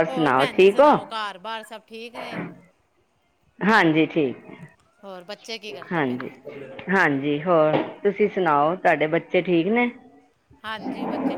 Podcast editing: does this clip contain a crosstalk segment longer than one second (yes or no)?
yes